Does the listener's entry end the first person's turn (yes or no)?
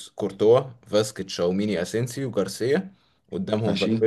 no